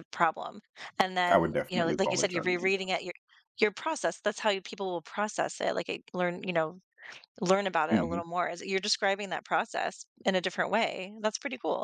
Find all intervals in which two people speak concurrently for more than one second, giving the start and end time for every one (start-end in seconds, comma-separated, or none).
1.3-2.7